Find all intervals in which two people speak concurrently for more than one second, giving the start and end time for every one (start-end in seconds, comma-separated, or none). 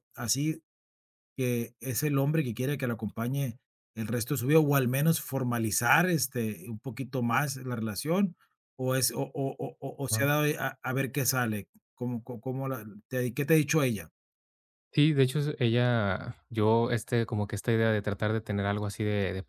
none